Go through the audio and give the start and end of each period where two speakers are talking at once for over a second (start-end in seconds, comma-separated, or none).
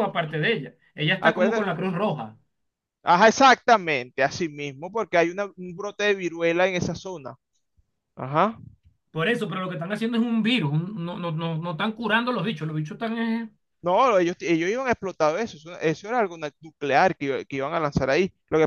none